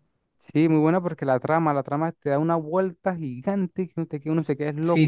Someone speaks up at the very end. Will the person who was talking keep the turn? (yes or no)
no